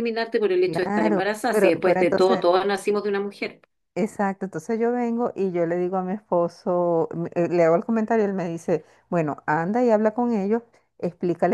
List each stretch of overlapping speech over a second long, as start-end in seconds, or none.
0.6-2.4